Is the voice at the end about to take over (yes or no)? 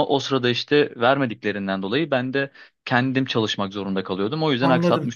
yes